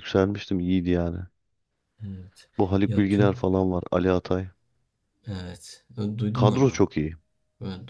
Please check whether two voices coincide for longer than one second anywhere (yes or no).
no